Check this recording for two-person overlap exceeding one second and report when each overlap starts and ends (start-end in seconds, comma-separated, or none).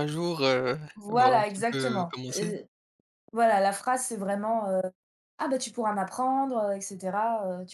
0.9-2.6